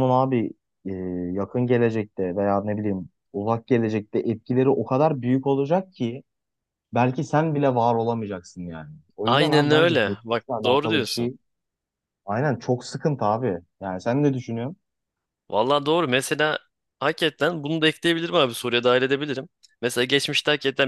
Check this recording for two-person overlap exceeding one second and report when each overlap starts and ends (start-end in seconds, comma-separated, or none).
9.2-11.3